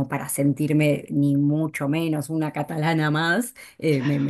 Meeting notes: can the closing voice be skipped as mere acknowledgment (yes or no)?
yes